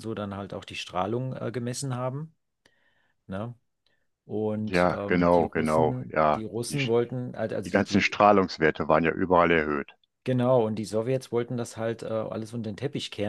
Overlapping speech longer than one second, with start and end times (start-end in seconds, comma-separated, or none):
4.7-6.8